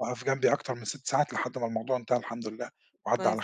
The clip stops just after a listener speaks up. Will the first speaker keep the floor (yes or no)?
no